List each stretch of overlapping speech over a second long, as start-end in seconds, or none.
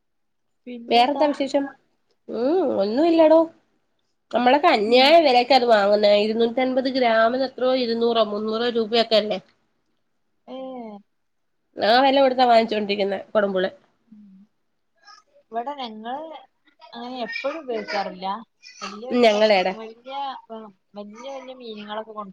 none